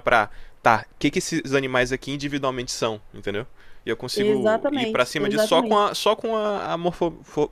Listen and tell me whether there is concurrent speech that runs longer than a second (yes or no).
yes